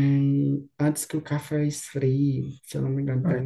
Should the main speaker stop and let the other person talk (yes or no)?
yes